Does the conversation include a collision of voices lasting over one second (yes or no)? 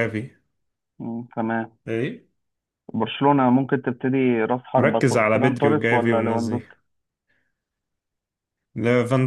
yes